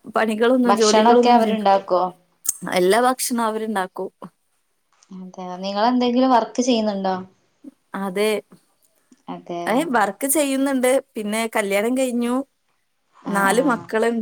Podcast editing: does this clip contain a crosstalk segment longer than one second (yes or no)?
yes